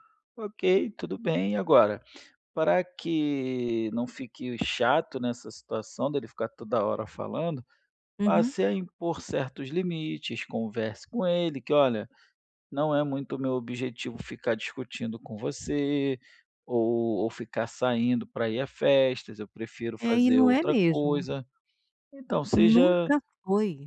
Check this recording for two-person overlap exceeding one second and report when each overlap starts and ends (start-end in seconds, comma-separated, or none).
20.0-21.2